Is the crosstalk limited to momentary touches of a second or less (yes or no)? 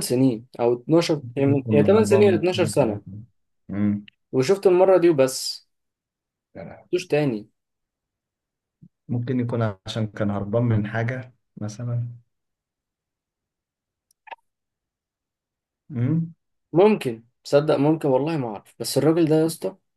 no